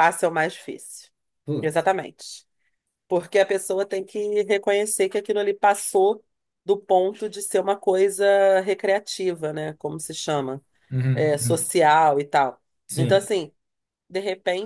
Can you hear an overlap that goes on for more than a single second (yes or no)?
no